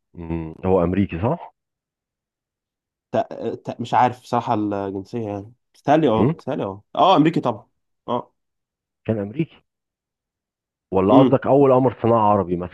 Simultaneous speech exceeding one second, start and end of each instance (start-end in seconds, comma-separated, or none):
none